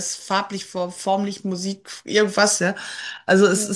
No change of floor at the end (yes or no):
yes